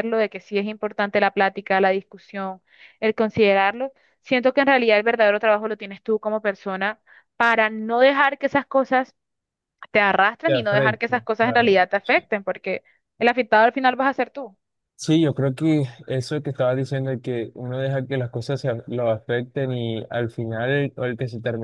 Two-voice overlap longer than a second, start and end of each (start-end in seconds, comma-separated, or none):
10.5-11.8